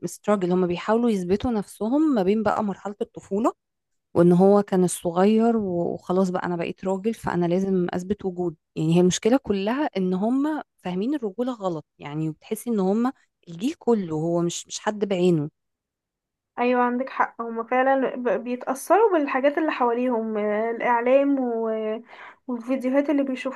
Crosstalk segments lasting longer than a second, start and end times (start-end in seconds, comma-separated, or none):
none